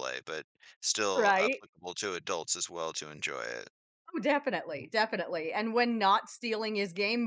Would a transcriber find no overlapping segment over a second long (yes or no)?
yes